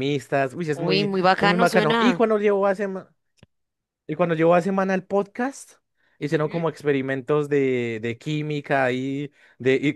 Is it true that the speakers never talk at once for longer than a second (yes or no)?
no